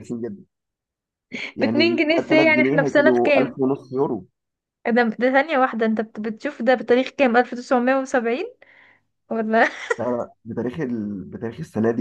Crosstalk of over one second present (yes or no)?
yes